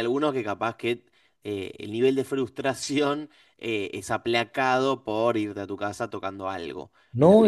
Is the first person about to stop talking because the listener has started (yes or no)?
yes